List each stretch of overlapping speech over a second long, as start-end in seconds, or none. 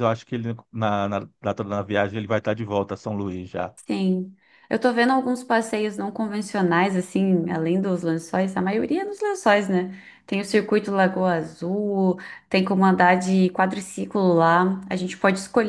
none